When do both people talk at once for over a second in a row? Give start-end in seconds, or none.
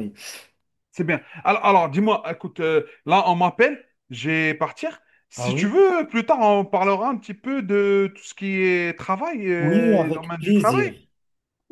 9.6-10.8